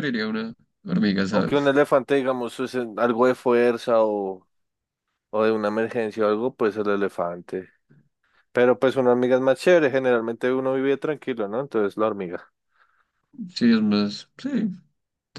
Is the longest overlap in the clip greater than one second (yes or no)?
no